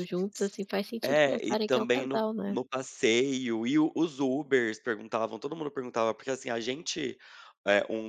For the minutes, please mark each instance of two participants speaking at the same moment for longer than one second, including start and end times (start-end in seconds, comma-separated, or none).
1.0-2.6